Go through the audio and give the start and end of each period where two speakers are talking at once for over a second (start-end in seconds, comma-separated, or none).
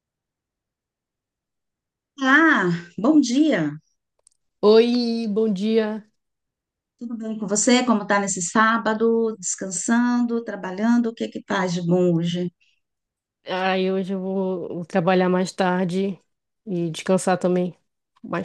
none